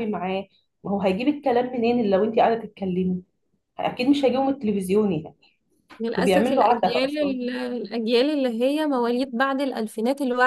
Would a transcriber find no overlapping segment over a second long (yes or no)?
no